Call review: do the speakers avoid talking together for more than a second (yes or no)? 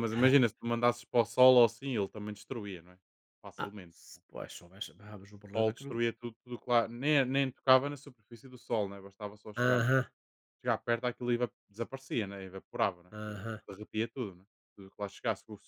yes